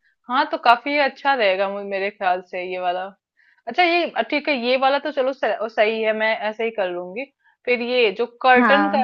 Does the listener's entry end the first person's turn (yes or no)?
no